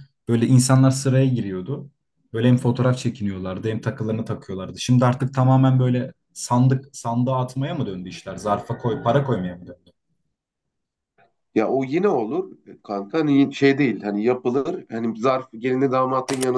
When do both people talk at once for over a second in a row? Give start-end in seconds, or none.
none